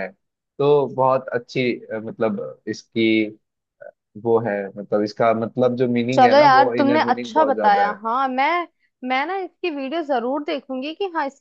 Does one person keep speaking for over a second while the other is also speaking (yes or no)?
yes